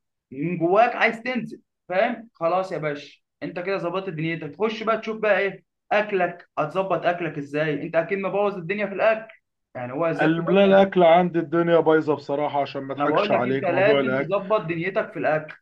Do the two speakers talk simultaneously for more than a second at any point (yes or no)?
yes